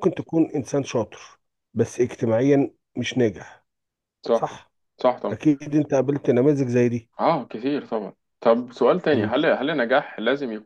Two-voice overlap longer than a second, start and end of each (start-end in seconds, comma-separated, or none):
none